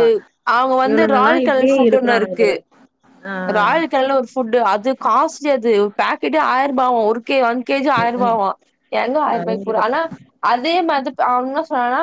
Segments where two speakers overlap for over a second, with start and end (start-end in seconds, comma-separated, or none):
0.9-2.4